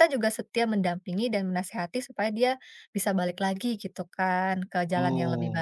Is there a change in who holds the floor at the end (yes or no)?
yes